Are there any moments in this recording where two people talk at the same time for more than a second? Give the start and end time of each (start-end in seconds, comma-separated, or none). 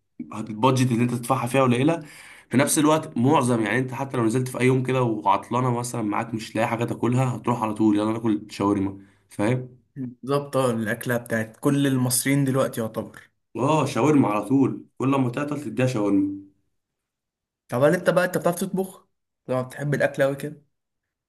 none